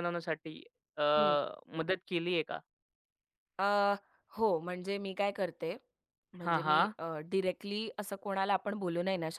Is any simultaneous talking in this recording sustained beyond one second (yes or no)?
no